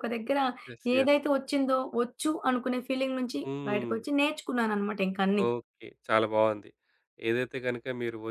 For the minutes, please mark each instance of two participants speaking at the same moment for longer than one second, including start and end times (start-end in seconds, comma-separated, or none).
none